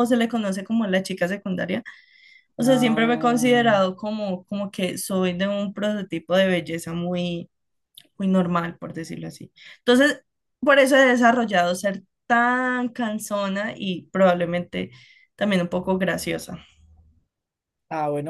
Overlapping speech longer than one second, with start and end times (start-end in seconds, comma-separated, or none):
2.6-3.8